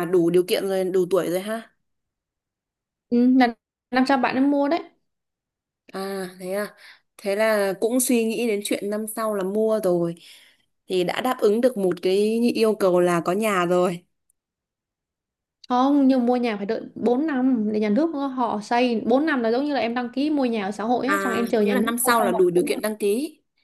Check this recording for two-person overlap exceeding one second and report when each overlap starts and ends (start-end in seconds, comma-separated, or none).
21.1-22.8